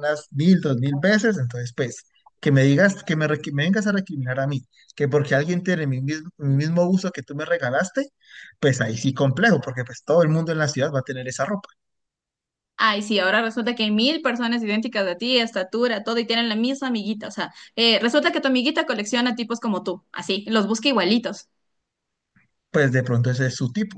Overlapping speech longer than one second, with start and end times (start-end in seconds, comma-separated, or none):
none